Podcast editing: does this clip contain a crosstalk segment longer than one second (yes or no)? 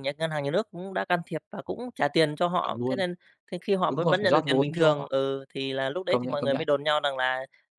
yes